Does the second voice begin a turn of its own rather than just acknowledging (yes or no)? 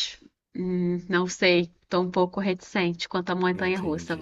yes